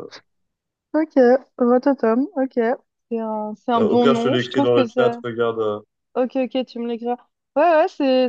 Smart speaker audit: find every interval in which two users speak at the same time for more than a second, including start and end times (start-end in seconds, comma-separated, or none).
3.8-5.2